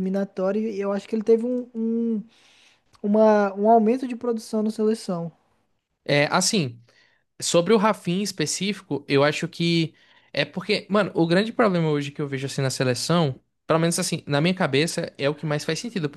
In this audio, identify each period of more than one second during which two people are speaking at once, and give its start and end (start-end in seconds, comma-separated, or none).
none